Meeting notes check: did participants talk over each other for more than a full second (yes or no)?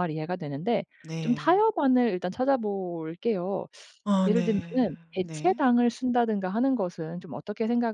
yes